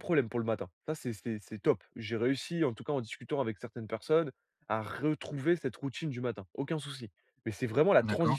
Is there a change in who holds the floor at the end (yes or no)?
no